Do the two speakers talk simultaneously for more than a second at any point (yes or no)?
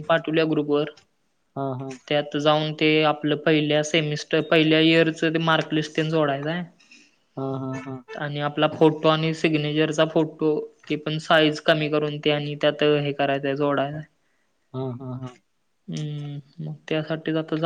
no